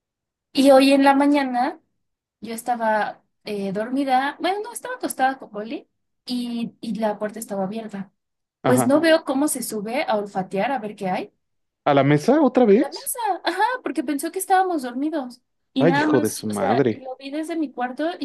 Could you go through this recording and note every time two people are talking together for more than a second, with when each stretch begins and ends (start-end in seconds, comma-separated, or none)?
15.8-17.0